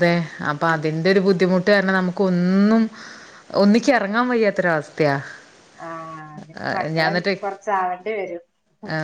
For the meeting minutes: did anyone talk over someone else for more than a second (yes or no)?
no